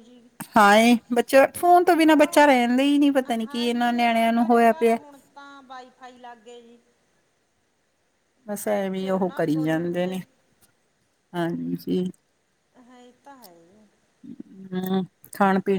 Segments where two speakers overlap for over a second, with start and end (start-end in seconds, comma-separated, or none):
3.4-5.0, 8.8-10.2